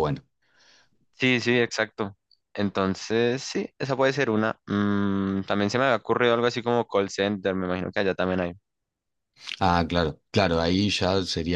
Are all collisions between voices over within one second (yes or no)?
yes